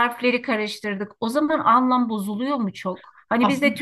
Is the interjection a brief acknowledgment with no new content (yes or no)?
yes